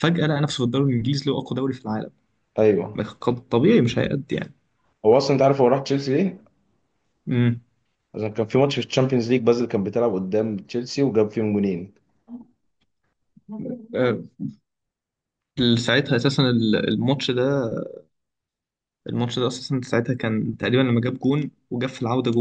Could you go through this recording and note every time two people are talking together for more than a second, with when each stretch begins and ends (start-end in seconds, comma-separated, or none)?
none